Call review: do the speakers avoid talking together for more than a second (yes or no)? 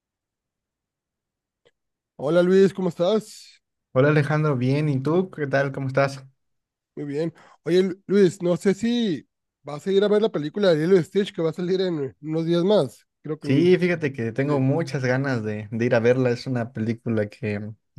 yes